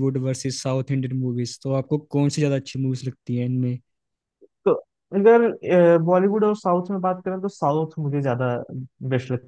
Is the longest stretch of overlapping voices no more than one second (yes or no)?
yes